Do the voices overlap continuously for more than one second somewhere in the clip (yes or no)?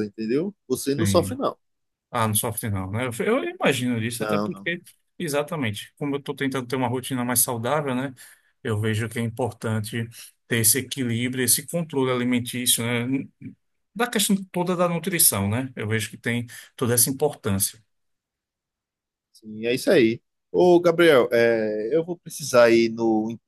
no